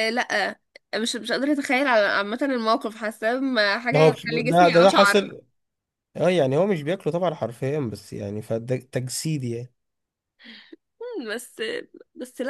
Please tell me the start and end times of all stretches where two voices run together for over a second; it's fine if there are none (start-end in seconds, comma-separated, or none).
3.9-5.2